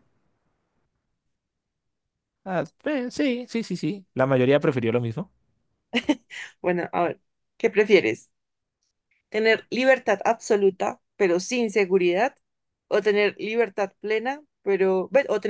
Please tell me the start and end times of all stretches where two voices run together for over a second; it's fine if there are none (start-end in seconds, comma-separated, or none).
none